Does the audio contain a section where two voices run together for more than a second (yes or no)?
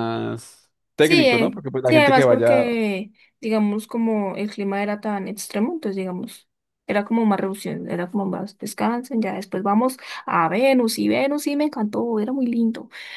yes